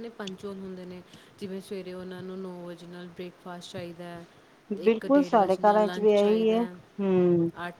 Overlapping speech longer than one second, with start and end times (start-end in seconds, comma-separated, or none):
4.8-6.6